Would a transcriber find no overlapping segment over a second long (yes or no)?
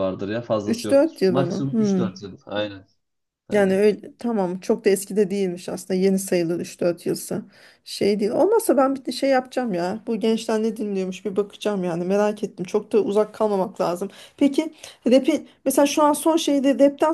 no